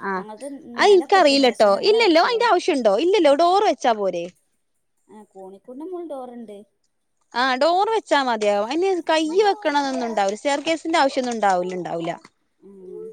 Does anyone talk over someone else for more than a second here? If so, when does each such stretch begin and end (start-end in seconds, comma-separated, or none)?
0.8-2.5